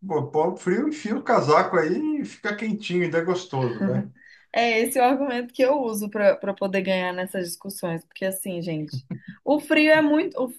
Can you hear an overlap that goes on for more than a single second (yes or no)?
no